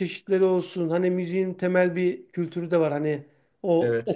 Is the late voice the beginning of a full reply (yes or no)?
no